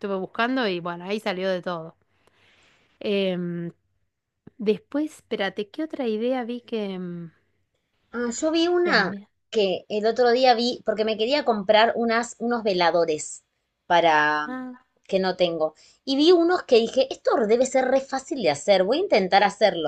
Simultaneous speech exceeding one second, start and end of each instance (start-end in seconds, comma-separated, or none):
none